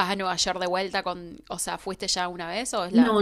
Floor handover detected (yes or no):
yes